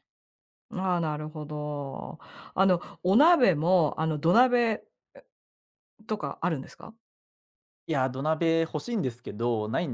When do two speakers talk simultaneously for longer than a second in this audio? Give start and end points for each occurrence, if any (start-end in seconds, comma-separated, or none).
none